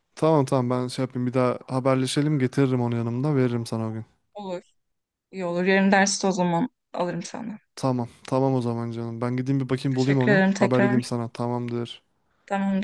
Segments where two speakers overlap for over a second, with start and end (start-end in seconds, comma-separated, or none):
9.9-11.2